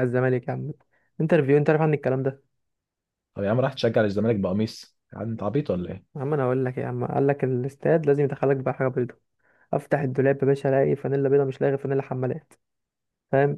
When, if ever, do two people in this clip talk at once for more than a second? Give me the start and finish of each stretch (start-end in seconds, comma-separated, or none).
none